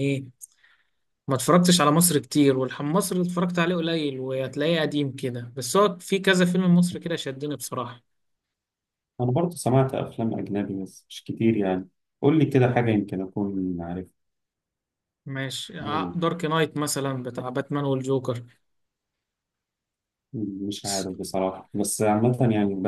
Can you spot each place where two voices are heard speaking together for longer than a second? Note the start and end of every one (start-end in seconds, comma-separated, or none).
none